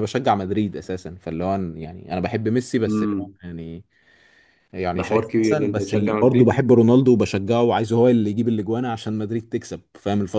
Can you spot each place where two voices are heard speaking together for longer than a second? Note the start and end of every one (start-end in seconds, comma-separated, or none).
5.0-6.6